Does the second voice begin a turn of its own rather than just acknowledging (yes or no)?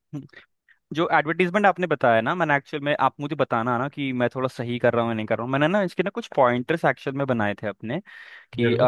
no